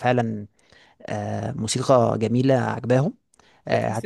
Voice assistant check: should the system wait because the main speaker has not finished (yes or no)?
yes